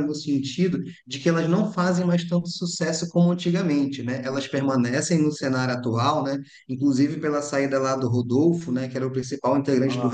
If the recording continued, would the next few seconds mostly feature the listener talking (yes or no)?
no